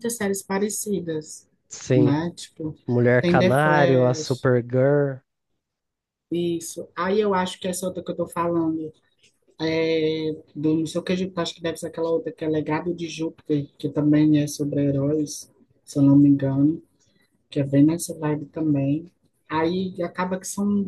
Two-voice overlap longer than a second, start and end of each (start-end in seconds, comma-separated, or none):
3.2-4.5